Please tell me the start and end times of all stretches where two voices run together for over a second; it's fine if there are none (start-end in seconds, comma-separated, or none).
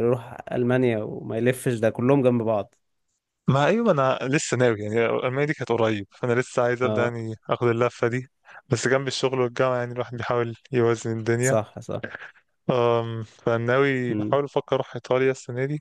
none